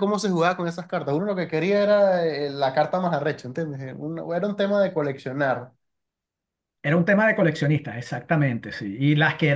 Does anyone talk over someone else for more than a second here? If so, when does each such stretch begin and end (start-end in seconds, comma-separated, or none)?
none